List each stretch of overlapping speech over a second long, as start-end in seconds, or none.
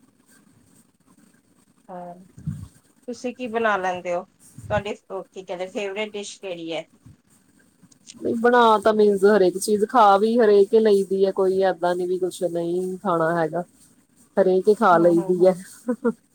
none